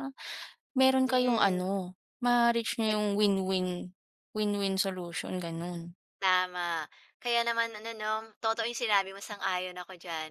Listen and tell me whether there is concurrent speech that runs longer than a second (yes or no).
no